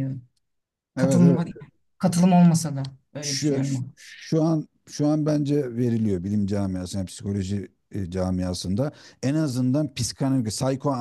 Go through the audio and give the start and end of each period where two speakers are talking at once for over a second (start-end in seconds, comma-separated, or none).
none